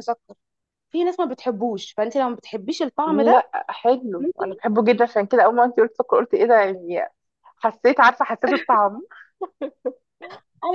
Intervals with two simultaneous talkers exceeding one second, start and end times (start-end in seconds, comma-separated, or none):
none